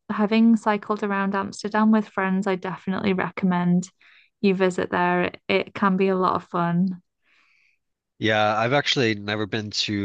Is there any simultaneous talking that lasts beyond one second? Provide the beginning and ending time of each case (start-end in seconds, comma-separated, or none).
none